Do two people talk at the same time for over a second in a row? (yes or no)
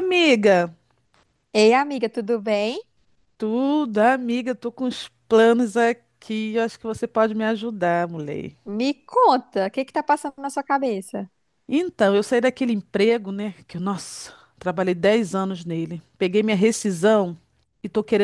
no